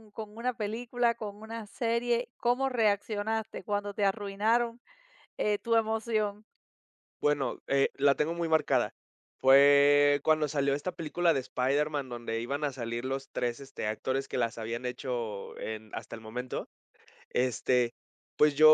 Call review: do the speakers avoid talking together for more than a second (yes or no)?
yes